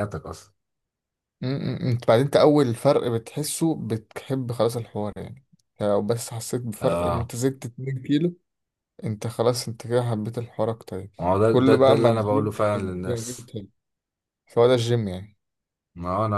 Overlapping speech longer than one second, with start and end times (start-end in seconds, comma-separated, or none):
11.2-13.5